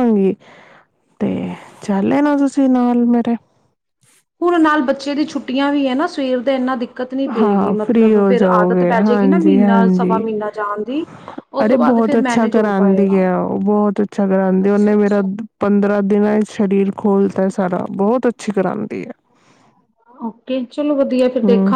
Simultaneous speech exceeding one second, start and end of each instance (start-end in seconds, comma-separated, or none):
8.9-10.2, 11.7-13.2